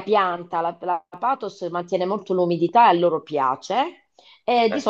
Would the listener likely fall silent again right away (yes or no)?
yes